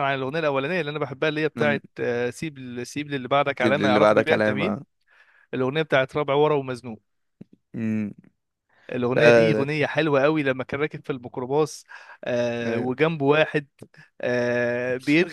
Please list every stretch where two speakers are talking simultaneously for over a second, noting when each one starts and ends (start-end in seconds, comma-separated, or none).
3.5-4.8